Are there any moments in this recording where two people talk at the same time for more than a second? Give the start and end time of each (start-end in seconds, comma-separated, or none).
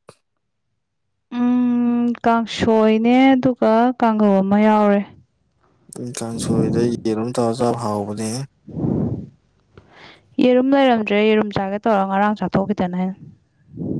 none